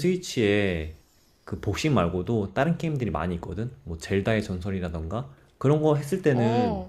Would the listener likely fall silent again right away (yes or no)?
yes